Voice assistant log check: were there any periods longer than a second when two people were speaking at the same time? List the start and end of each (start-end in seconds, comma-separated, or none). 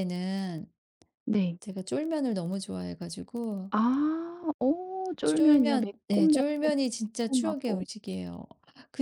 5.2-7.8